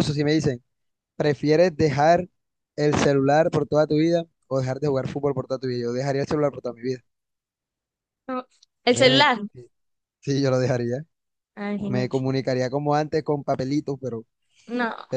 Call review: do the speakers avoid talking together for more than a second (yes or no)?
yes